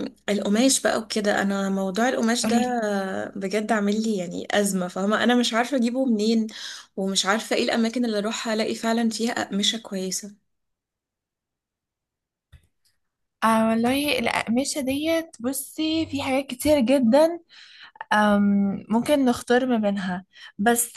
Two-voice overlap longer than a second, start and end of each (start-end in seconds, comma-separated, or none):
none